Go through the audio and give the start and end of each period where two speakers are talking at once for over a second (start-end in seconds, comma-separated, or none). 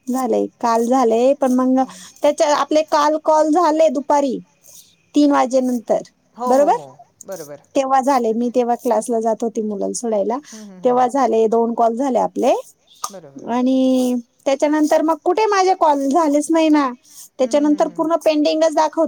none